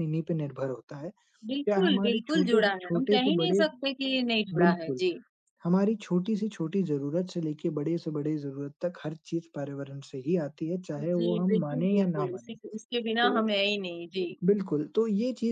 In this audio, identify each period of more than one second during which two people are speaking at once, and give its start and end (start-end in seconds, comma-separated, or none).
1.7-3.6, 11.0-12.5